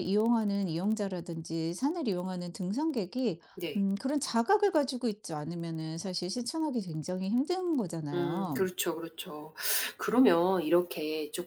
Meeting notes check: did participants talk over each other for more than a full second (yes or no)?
no